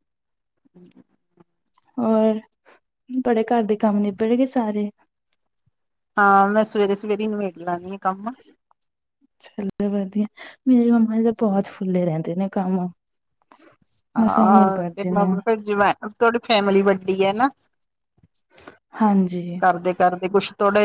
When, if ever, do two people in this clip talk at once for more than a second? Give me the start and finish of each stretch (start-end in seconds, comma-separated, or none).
none